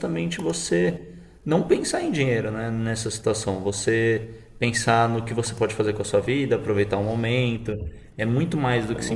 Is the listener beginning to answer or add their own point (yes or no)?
yes